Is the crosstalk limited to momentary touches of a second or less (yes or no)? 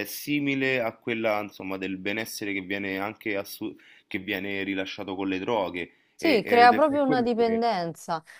no